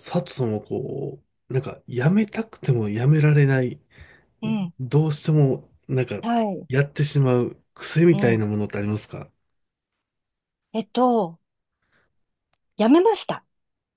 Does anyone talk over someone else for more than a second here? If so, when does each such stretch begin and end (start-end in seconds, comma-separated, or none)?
none